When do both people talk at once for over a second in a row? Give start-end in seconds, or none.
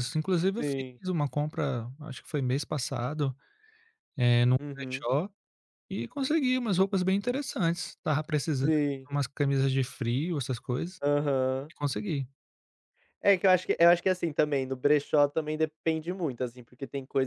none